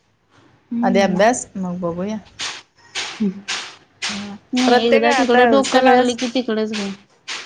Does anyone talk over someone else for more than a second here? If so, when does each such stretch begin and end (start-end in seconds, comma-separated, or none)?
4.5-6.2